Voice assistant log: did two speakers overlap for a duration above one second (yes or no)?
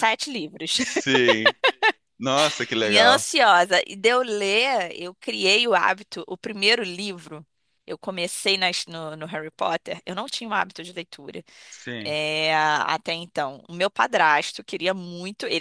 no